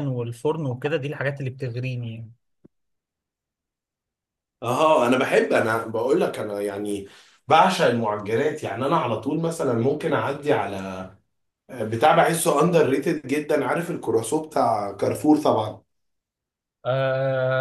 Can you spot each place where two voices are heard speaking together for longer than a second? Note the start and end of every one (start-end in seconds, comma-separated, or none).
none